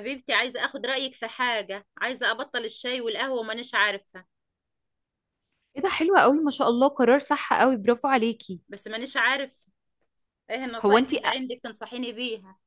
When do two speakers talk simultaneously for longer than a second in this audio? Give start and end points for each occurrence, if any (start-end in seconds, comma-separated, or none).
none